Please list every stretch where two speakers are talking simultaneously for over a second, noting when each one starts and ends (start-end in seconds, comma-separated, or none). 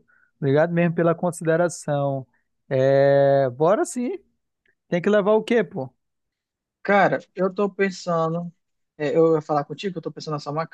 none